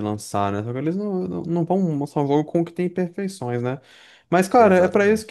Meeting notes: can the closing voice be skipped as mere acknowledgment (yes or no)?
yes